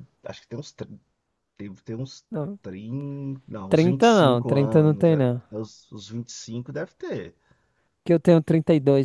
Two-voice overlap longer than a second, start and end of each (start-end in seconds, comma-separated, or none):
3.7-5.4